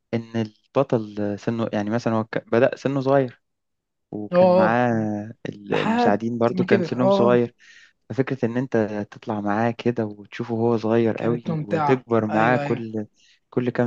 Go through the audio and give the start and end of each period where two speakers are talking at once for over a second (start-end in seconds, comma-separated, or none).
5.7-7.4, 11.2-12.8